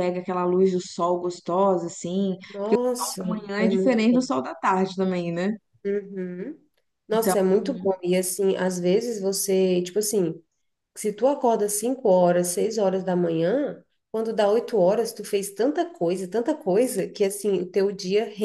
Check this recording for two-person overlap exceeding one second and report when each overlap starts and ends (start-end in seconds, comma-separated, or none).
2.5-4.3